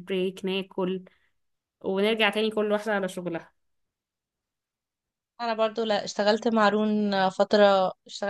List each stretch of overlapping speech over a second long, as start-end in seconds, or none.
none